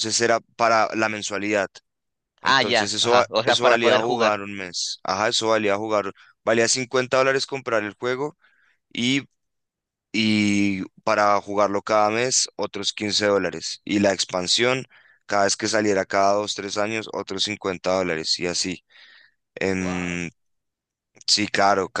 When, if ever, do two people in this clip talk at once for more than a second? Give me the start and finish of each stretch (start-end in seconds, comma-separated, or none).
2.4-4.4